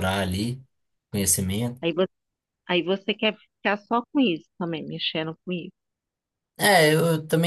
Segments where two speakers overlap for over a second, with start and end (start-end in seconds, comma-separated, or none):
none